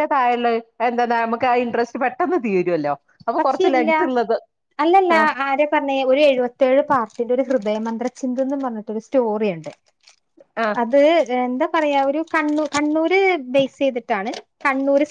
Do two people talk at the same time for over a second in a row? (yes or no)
no